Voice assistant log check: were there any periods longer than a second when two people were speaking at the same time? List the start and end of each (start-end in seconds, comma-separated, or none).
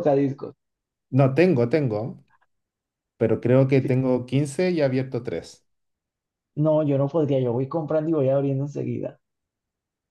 none